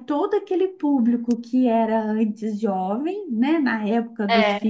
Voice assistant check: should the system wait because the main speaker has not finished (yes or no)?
yes